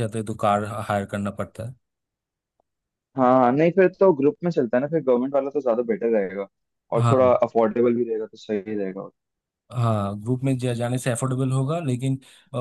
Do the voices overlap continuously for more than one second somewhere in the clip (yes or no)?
no